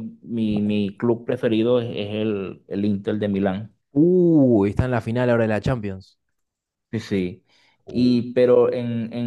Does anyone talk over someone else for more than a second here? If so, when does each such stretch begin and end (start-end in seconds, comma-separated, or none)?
none